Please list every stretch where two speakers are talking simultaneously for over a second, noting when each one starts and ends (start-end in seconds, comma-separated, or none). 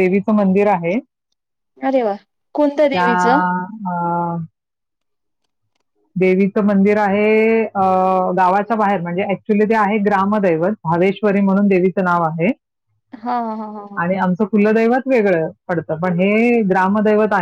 none